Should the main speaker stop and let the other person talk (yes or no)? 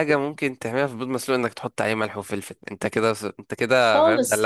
yes